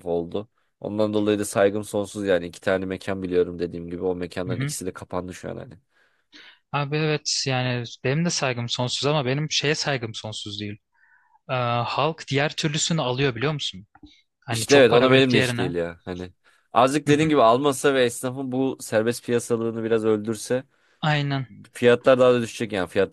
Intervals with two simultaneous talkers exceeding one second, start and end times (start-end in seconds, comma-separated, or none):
14.5-15.7